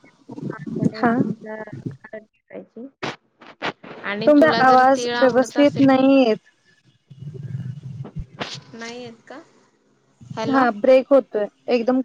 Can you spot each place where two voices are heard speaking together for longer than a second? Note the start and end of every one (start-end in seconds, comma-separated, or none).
4.3-5.9